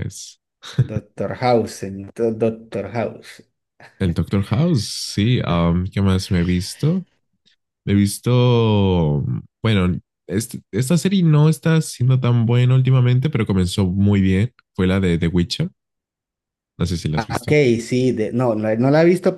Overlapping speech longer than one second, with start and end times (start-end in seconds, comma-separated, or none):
none